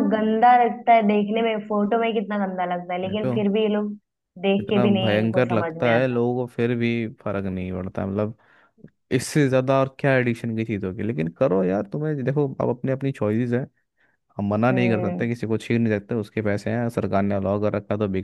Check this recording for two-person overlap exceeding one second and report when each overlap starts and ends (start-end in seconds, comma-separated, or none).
4.6-6.2